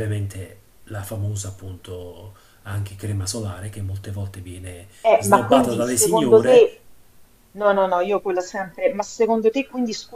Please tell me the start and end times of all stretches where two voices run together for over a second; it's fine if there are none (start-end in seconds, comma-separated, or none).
5.0-6.7